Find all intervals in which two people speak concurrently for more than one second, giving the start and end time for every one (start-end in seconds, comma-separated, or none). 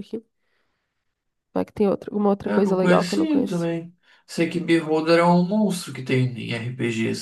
2.4-3.7